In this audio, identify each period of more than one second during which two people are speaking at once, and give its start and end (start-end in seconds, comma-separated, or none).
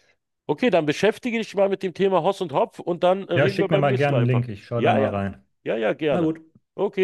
3.3-5.2